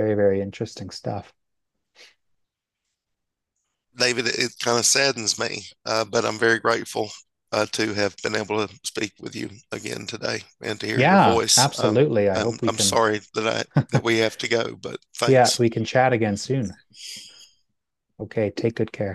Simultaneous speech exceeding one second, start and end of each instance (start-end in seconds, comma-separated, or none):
10.9-13.0